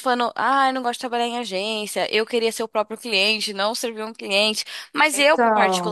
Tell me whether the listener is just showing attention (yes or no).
yes